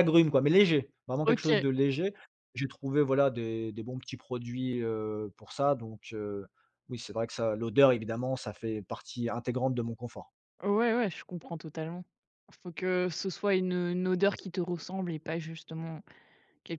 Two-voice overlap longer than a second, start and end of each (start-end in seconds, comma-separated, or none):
none